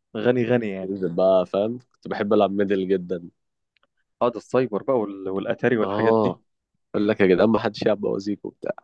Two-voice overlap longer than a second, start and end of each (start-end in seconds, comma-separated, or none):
none